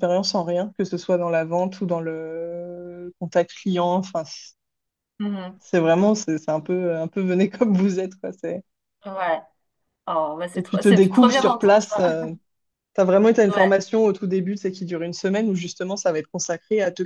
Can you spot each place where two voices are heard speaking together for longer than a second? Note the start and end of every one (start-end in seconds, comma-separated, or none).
10.5-12.0